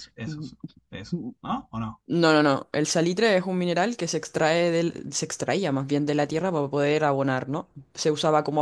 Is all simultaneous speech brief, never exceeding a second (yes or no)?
yes